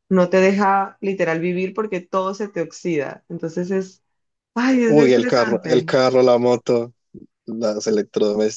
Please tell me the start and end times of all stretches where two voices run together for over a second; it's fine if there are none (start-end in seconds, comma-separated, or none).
4.7-5.9